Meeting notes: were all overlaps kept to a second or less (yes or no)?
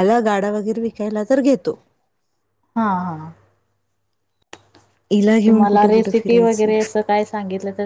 no